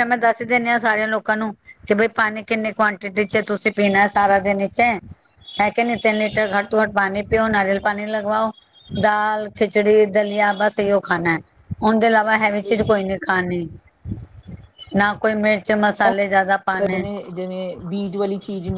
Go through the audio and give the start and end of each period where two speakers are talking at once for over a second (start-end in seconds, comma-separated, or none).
none